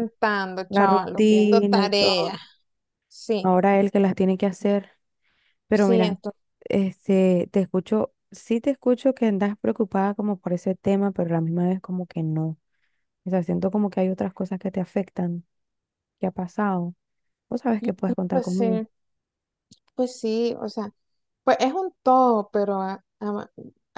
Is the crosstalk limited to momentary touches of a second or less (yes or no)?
no